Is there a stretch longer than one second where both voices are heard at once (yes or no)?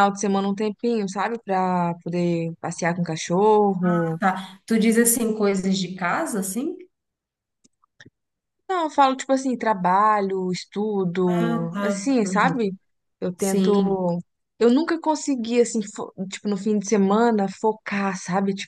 yes